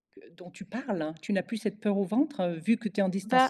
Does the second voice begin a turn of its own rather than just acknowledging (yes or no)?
no